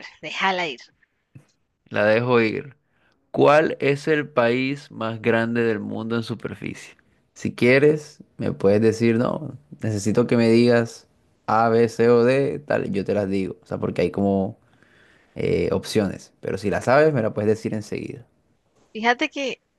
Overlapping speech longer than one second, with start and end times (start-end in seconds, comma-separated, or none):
none